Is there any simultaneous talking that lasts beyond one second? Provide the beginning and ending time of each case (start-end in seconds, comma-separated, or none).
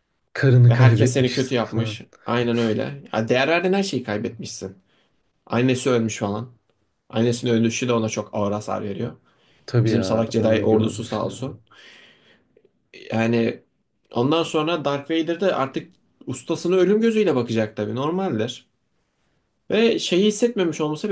0.7-2.0, 9.8-11.3